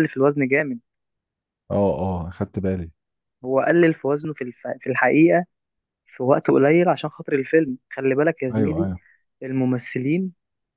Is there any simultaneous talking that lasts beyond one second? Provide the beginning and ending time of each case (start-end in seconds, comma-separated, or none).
none